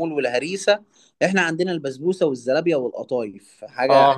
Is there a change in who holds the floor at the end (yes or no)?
yes